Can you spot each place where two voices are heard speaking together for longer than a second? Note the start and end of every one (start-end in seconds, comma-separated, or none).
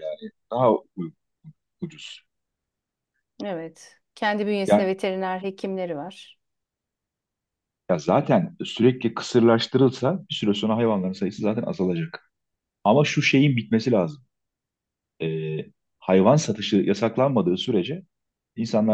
none